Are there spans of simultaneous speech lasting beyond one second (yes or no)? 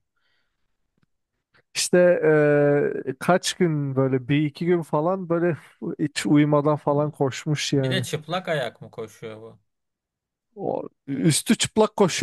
no